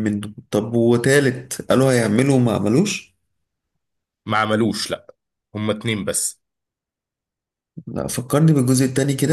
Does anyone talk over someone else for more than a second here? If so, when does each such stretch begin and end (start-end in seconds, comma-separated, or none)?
none